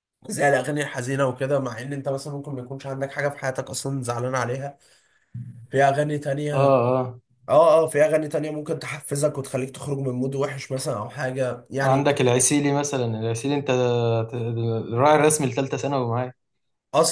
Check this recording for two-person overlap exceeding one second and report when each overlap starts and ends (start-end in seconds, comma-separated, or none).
none